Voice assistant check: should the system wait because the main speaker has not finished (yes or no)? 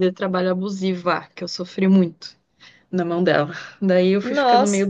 yes